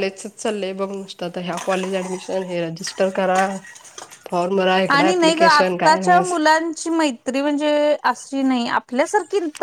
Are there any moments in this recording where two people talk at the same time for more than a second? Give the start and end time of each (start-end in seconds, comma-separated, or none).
none